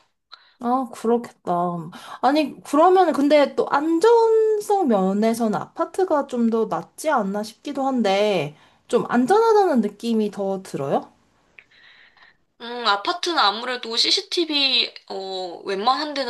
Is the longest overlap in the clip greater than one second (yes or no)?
no